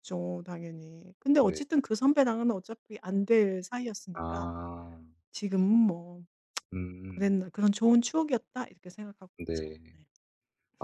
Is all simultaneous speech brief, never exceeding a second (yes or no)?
yes